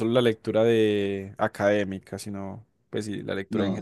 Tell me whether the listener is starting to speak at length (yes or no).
yes